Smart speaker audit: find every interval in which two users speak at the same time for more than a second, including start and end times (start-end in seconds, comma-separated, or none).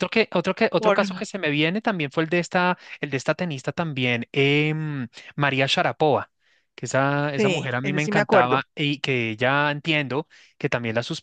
7.3-8.6